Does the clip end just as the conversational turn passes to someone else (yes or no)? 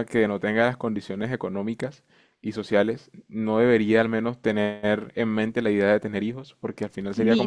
yes